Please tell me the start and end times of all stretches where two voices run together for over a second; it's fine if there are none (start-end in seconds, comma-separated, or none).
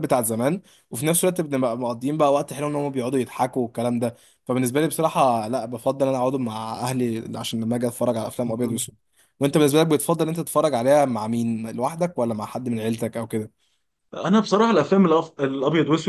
none